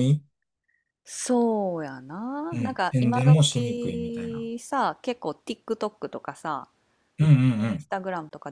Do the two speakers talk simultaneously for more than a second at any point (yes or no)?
yes